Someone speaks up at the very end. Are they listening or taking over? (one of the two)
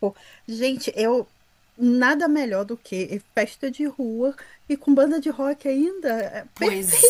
taking over